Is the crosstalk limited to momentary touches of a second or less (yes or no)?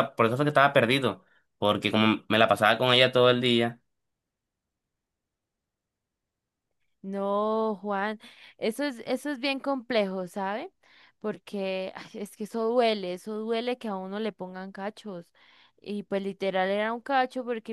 yes